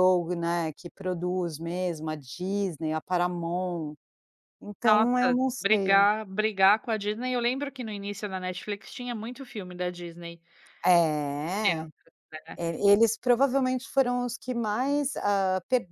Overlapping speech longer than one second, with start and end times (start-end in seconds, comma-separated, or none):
4.8-6.1